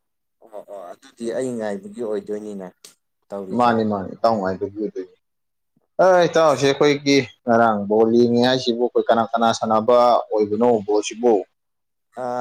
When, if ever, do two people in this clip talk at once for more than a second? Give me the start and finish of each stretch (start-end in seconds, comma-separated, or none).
none